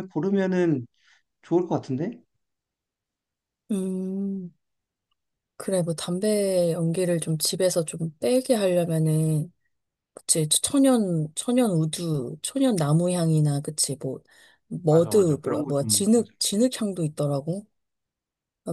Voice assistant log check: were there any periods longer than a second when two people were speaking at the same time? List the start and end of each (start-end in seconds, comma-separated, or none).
14.9-16.3